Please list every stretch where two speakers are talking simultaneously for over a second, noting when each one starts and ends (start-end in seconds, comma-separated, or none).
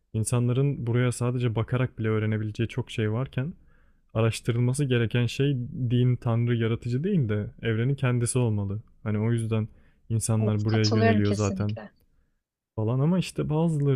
10.4-11.8